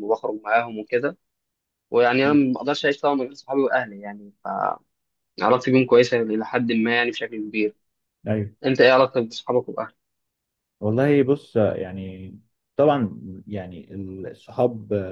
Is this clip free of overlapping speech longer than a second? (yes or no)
yes